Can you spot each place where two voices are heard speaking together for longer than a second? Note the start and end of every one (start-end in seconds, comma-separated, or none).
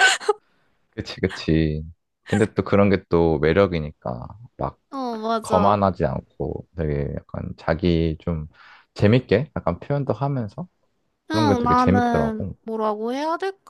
11.3-12.5